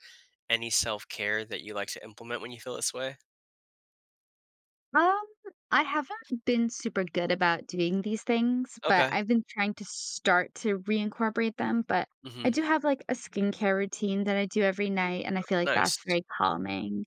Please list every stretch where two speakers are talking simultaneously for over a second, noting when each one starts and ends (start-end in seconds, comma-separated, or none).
none